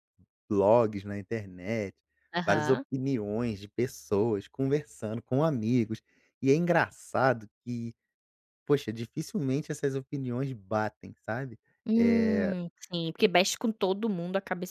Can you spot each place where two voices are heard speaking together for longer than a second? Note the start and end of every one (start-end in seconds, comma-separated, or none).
none